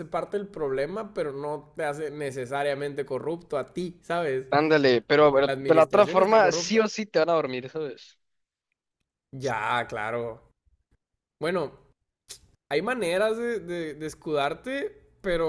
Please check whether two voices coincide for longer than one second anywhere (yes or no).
yes